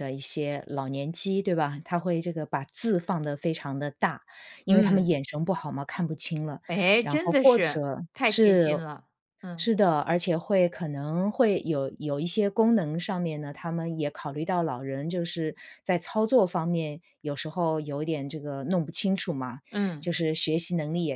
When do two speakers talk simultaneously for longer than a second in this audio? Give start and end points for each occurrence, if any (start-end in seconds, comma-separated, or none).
7.0-8.6